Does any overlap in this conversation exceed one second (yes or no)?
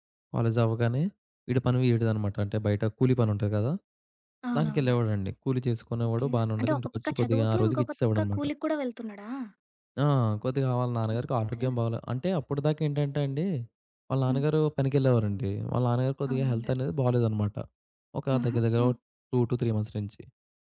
yes